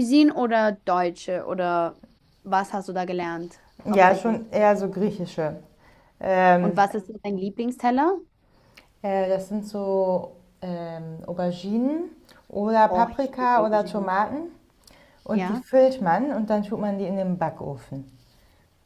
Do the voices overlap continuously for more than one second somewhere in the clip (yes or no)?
yes